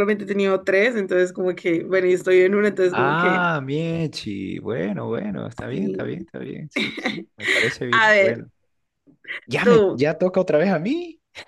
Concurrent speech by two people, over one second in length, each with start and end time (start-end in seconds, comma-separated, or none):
none